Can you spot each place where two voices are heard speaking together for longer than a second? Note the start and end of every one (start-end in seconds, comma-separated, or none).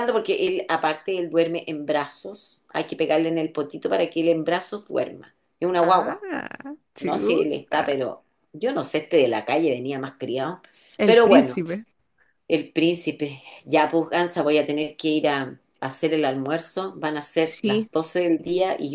none